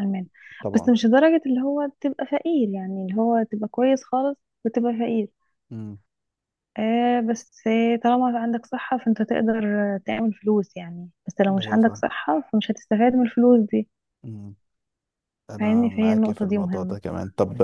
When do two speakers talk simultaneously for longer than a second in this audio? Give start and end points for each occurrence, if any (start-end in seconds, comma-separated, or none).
15.6-17.0